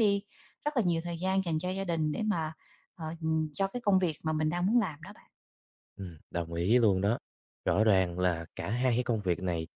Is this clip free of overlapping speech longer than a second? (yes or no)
yes